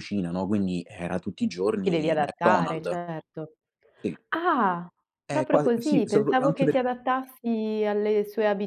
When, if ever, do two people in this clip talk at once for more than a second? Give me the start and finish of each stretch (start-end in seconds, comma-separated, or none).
1.8-3.0, 5.3-6.8